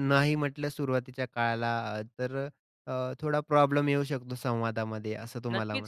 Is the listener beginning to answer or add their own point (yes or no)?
yes